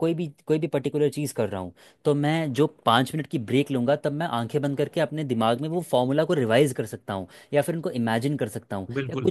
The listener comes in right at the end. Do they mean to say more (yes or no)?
no